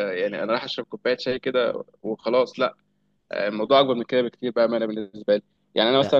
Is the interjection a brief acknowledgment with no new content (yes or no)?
yes